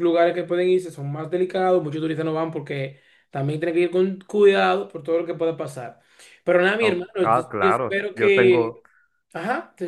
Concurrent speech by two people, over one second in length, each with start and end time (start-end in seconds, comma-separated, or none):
6.8-8.8